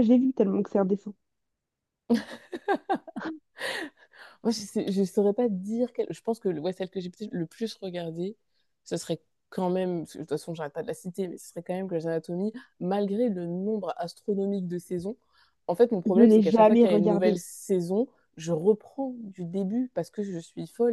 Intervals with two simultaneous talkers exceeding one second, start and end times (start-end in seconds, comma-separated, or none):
16.1-17.4